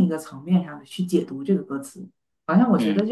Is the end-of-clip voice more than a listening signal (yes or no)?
no